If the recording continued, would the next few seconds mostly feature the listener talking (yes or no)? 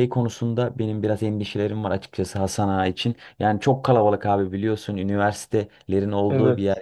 no